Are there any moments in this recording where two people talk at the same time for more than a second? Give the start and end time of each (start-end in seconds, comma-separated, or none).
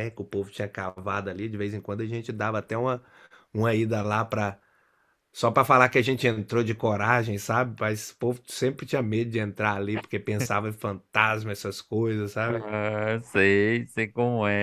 none